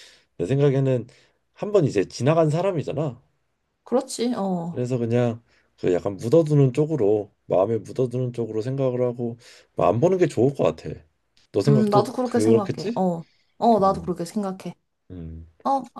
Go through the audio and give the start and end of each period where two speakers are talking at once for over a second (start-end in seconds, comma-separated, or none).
11.7-13.0